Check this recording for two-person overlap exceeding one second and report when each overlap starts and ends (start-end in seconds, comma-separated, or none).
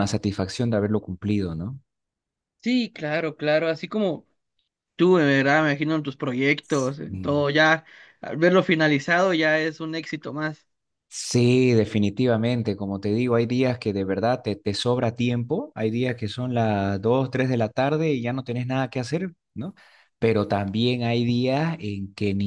none